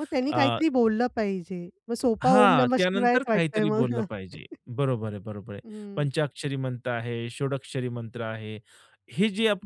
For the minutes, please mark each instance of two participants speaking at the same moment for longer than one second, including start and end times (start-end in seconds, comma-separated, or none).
2.2-4.1